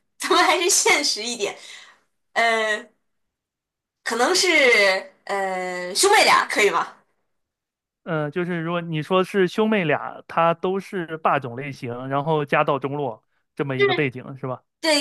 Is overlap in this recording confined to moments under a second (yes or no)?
yes